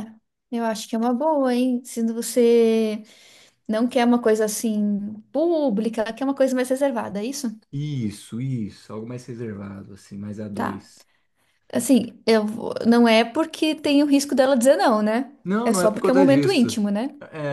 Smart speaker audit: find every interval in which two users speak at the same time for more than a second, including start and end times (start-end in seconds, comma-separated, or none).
15.4-16.8